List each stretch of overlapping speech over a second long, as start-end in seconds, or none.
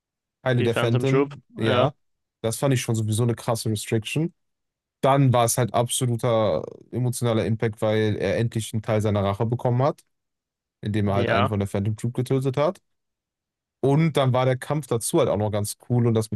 0.6-1.9